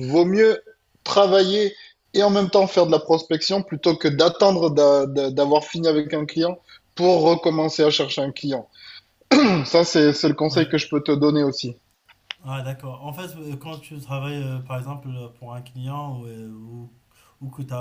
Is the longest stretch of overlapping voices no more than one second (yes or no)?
yes